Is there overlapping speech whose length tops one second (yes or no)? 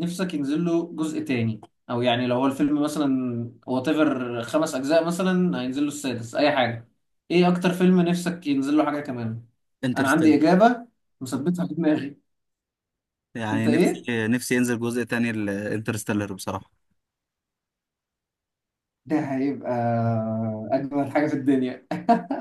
no